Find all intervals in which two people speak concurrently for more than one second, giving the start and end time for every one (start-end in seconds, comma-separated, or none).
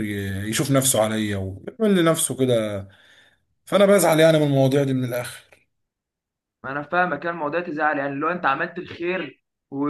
none